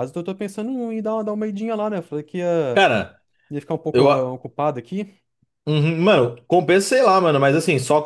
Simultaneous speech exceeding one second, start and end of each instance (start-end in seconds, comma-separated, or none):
none